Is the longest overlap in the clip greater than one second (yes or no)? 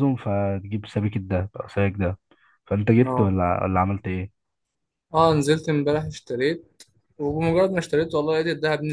no